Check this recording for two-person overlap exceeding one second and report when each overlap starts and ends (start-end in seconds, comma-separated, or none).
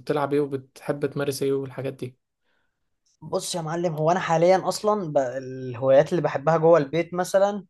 none